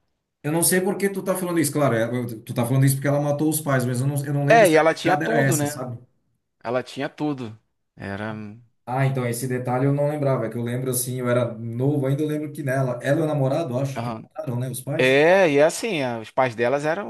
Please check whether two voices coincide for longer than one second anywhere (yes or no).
yes